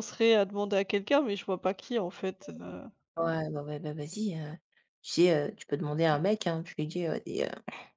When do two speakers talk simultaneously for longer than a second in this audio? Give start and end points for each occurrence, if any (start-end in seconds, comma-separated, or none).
none